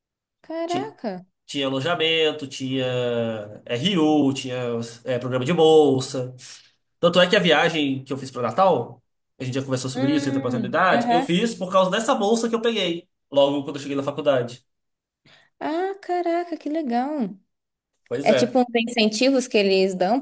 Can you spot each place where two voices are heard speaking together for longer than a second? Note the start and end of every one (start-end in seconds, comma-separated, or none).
9.9-11.3